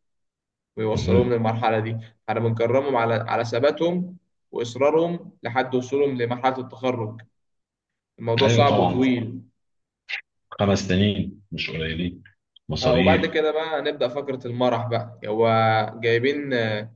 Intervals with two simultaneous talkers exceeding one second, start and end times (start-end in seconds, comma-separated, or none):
none